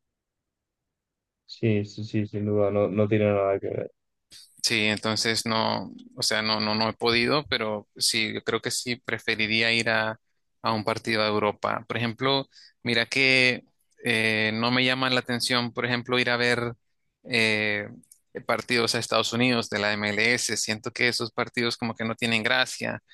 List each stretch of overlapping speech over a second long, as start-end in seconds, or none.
none